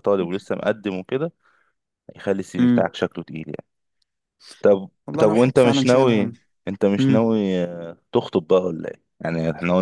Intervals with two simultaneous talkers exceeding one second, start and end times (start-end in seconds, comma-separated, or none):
5.1-6.3